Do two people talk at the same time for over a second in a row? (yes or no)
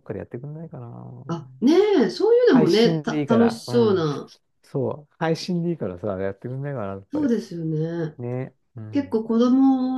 yes